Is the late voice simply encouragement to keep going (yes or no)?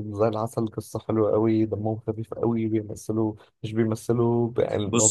yes